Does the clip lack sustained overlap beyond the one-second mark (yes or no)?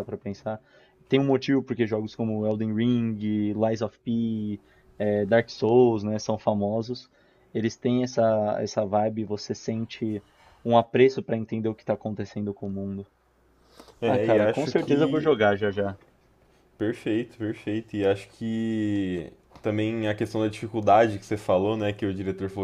no